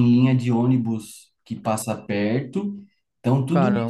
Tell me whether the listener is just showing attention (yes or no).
yes